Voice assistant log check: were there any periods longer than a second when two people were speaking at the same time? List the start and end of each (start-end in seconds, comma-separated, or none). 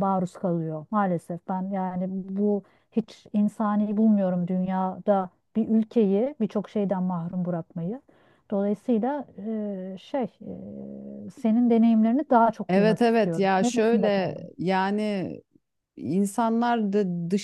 12.7-14.5